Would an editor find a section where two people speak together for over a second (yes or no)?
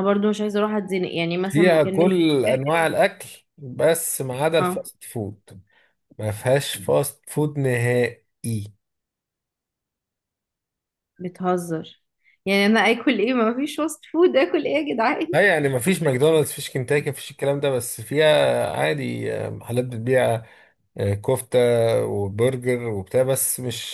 yes